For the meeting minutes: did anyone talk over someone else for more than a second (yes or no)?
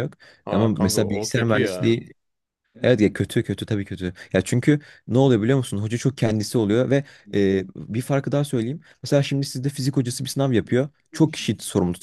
yes